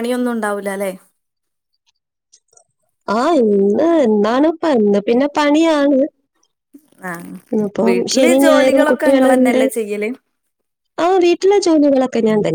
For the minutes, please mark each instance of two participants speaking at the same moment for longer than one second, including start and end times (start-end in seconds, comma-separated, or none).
7.9-9.6